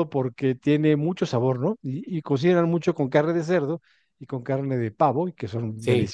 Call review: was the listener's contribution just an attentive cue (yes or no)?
no